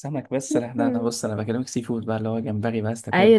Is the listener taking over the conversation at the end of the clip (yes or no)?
yes